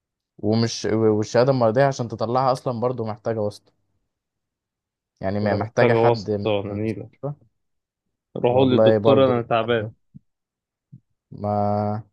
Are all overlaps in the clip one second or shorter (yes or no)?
no